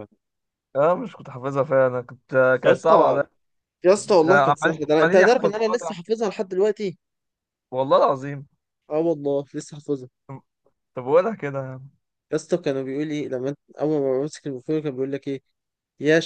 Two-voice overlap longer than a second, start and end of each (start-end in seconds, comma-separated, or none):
4.2-5.9